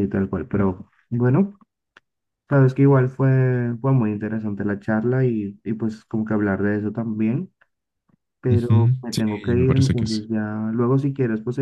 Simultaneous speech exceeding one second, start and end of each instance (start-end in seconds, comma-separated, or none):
8.5-10.2